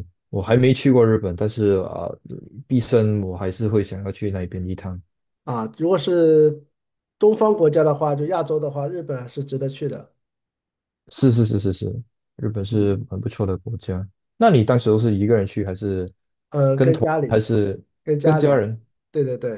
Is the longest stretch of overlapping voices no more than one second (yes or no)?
yes